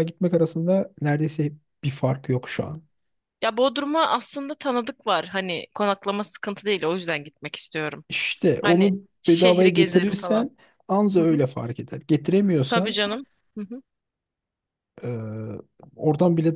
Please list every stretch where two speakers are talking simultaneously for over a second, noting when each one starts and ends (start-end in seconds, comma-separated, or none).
8.6-10.5